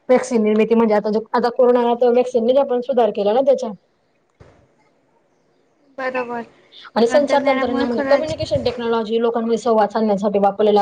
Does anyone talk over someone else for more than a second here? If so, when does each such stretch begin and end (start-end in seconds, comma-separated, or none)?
7.1-8.3